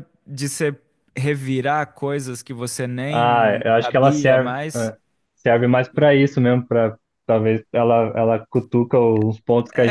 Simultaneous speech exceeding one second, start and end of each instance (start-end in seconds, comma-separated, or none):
3.1-4.9